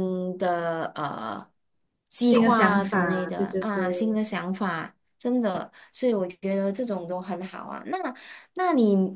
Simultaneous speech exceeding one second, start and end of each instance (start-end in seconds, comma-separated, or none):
2.2-4.2